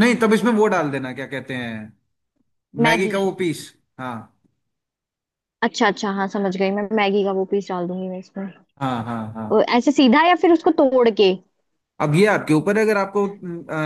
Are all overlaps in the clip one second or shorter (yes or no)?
yes